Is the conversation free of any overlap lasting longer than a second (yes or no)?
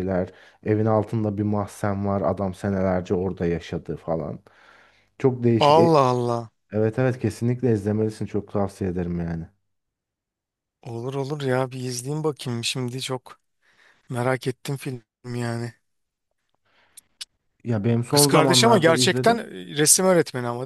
no